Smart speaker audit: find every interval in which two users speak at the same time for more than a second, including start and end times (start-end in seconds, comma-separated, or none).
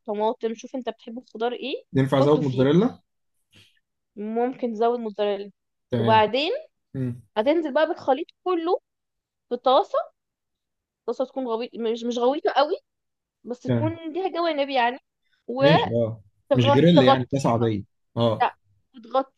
16.5-17.7